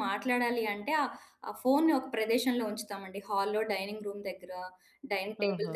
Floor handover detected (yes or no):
no